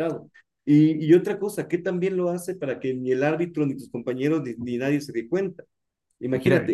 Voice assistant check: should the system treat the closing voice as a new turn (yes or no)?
no